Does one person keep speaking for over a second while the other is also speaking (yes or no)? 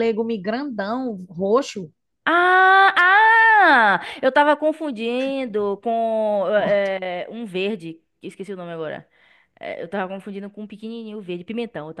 no